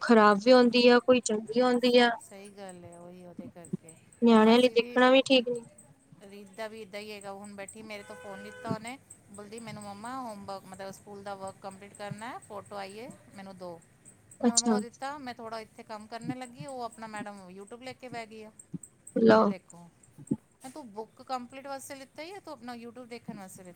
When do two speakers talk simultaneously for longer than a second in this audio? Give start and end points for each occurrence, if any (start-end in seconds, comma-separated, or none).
none